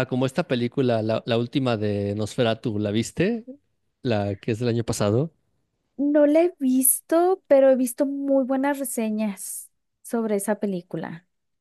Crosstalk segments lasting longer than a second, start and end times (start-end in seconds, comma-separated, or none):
none